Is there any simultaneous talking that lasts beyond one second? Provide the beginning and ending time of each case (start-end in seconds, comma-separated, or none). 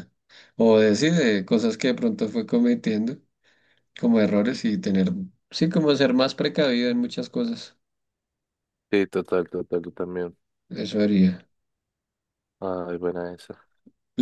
none